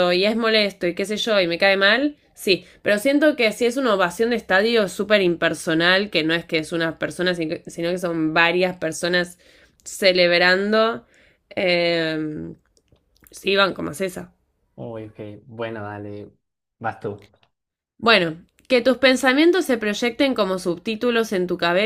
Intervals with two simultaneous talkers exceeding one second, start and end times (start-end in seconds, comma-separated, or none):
none